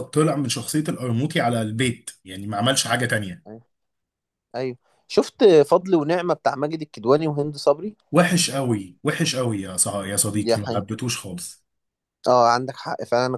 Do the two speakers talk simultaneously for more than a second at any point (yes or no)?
no